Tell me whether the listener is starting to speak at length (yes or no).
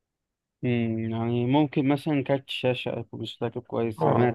yes